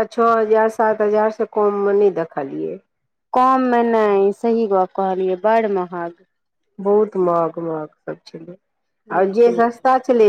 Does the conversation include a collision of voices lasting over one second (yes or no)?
no